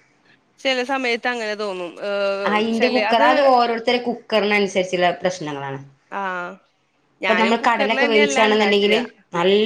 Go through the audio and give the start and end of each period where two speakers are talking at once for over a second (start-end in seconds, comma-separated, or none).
7.3-9.0